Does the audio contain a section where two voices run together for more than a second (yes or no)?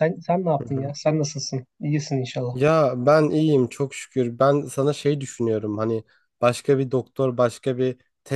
no